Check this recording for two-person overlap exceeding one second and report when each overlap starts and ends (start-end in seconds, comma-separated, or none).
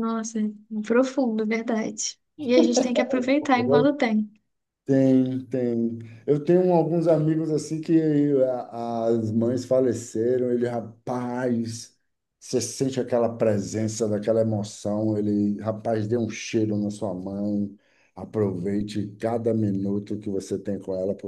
none